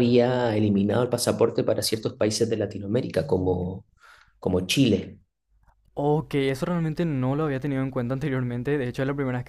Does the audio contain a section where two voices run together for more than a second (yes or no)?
no